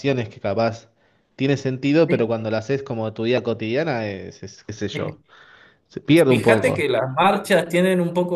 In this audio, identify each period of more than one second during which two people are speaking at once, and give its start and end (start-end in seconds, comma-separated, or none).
none